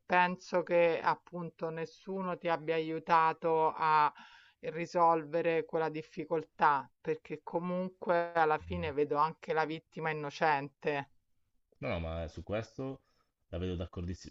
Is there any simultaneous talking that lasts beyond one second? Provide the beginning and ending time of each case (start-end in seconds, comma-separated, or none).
none